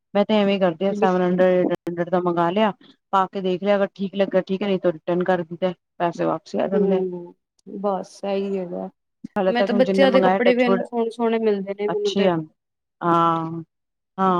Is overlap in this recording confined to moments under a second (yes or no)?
no